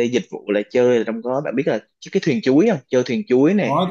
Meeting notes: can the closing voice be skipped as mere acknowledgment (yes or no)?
no